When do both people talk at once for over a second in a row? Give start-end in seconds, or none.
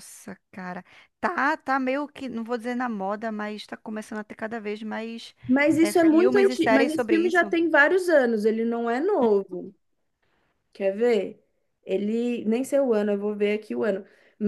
5.8-7.5